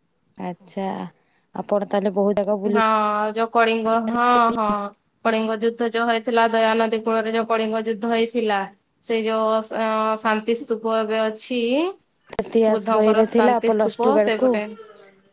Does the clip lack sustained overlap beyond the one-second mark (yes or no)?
no